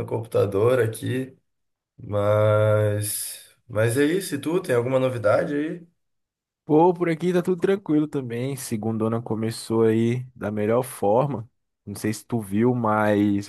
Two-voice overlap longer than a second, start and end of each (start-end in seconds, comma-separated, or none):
none